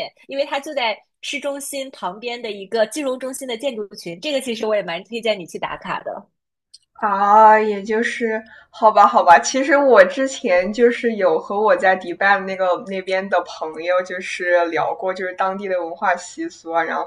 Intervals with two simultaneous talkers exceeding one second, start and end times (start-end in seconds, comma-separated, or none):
none